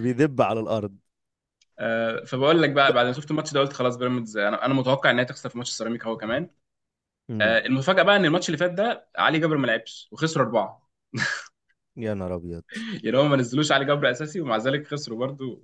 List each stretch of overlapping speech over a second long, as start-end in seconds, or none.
none